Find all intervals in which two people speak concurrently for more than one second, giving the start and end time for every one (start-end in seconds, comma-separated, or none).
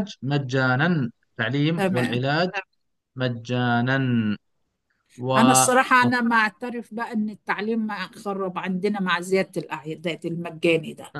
none